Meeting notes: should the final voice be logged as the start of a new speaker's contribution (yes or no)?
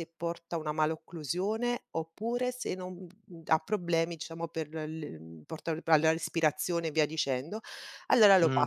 no